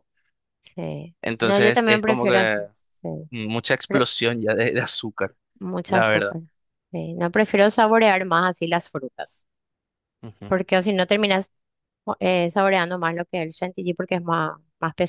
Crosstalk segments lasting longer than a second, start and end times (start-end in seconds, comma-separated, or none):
1.2-2.6